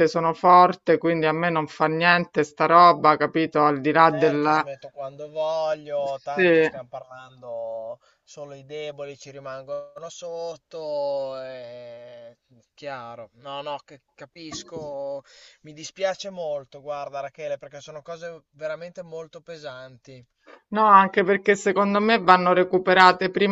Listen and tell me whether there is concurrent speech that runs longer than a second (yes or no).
no